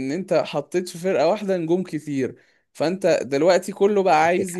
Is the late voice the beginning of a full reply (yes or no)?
no